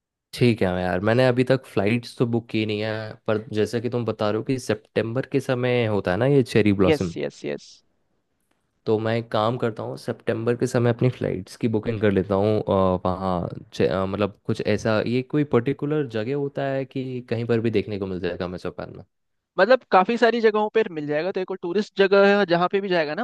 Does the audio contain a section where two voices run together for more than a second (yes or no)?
no